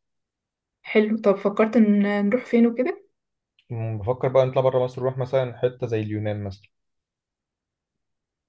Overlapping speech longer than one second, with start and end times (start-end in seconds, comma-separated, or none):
none